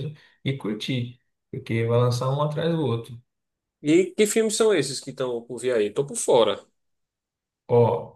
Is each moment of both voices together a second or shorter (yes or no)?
yes